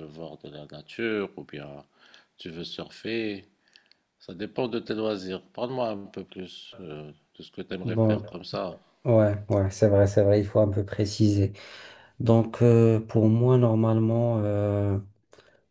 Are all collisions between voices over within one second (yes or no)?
yes